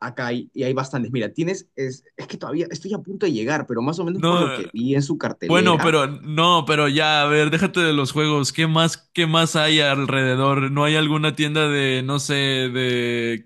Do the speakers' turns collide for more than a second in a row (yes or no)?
no